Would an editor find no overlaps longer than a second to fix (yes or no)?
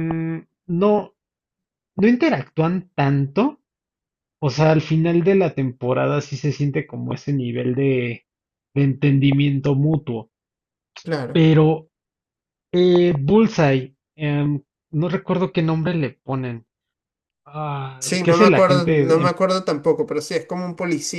no